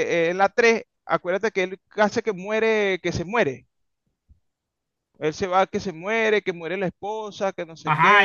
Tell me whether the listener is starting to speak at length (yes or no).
yes